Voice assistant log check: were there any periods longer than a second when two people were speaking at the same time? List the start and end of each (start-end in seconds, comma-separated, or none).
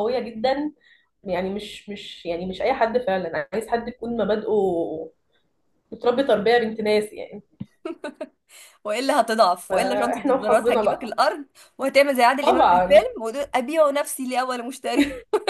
9.7-11.2